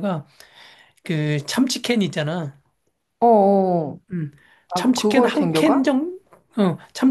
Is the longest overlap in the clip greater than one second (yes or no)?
yes